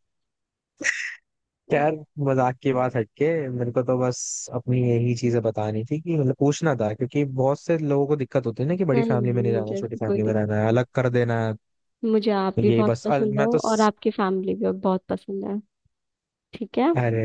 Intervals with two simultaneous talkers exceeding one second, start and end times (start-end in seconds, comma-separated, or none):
8.9-10.8, 12.2-13.9